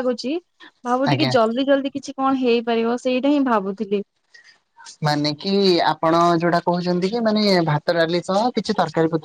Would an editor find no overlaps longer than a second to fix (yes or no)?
yes